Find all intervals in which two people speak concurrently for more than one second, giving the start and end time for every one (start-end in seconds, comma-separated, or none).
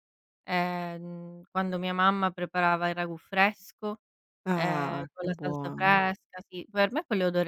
4.5-6.0